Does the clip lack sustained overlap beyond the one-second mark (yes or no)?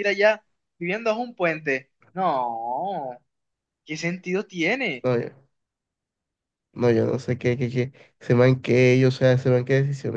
yes